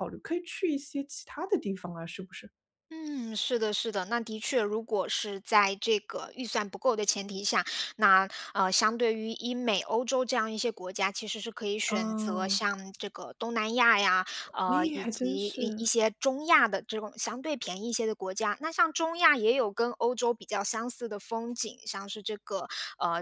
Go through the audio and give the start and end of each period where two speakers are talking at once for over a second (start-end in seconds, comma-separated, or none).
14.7-15.9